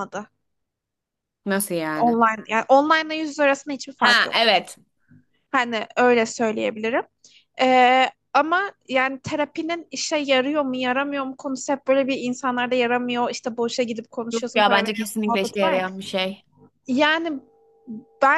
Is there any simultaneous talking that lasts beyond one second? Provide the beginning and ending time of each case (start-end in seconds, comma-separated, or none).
14.3-15.8